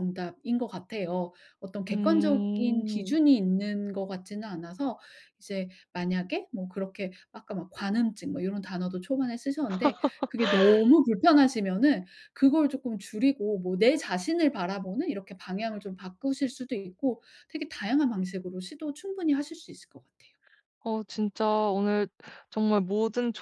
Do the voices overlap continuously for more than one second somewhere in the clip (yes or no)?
yes